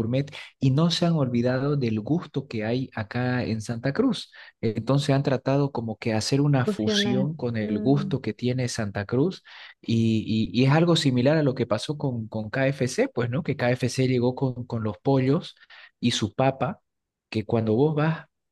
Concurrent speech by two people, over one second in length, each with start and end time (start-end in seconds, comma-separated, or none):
6.6-8.2